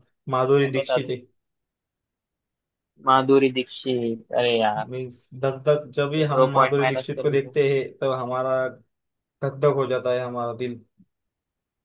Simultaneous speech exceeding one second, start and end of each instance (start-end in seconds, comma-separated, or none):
6.1-7.6